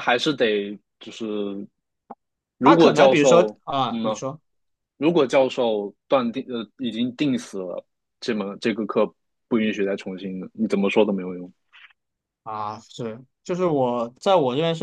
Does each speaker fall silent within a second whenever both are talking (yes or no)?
no